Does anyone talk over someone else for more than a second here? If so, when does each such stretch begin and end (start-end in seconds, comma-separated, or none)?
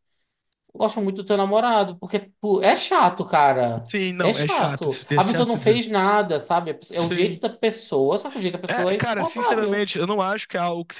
3.8-5.8, 8.7-9.9